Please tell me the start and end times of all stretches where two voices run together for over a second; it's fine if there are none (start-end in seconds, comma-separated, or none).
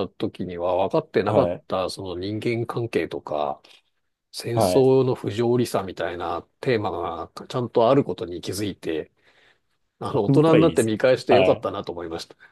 10.1-11.7